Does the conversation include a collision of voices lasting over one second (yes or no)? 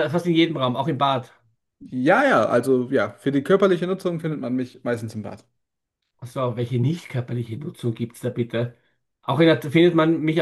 no